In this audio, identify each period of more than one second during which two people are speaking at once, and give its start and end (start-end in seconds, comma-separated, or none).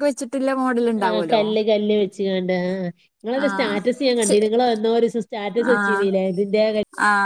none